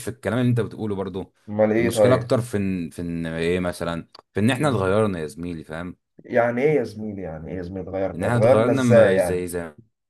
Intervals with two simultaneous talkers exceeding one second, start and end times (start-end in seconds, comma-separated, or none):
8.2-9.4